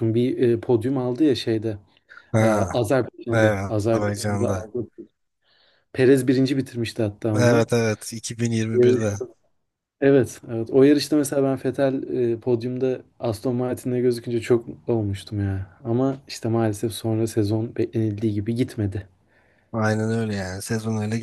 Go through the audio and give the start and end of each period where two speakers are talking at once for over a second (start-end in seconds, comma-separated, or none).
3.3-4.7